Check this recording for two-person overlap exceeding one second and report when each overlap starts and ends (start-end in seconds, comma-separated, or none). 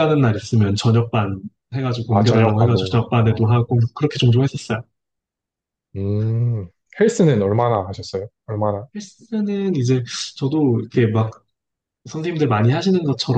2.1-3.6